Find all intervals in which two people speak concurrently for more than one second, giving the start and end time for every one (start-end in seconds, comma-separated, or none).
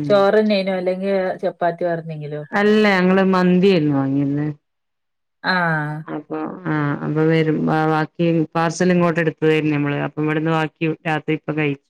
none